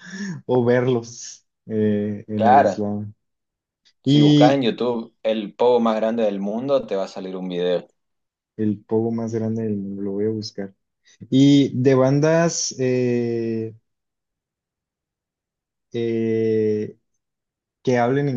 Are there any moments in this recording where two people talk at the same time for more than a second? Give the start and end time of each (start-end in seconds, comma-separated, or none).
none